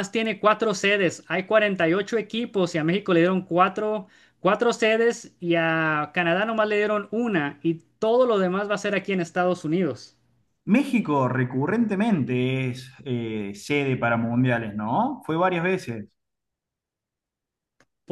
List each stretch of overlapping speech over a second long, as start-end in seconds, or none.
none